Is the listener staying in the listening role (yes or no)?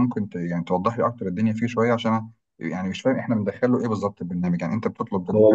no